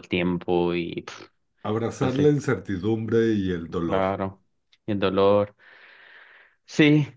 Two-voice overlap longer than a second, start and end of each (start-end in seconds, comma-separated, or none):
none